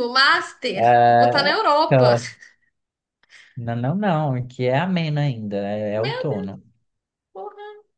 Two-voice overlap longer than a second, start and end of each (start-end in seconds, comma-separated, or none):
0.7-2.1